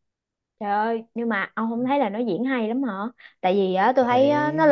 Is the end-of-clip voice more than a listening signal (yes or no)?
no